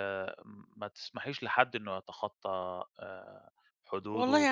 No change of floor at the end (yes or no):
no